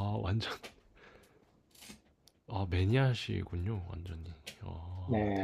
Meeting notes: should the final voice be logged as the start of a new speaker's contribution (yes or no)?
yes